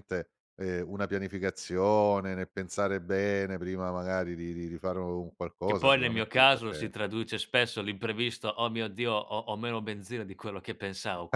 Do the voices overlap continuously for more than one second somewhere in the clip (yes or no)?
yes